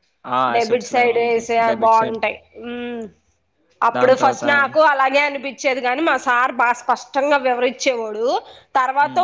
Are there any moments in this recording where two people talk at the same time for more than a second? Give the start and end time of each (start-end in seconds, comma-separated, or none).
0.6-2.1